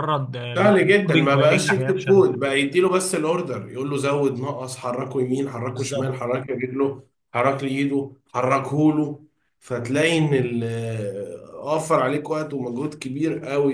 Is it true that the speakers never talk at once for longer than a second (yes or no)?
no